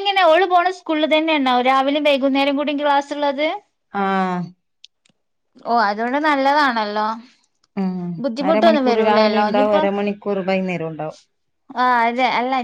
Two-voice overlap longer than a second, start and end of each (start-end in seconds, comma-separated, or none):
8.5-9.8